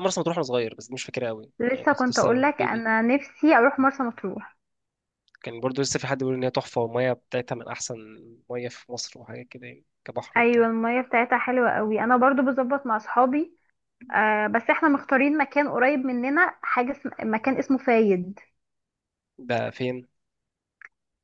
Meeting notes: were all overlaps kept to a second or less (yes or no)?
no